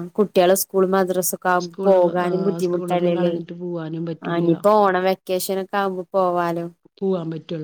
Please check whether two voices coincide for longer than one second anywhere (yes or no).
no